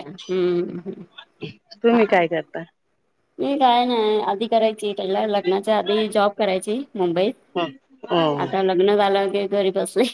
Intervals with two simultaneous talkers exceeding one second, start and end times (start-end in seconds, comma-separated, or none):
none